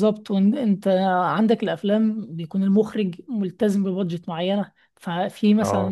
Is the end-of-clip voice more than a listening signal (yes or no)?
no